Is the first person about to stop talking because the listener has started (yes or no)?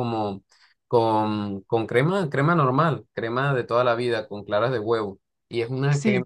no